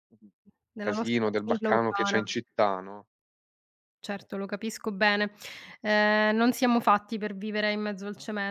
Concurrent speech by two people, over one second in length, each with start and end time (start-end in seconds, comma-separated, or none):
0.8-2.2